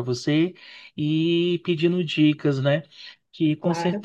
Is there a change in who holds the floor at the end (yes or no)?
no